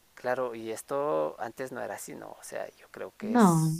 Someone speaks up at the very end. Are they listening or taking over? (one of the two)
listening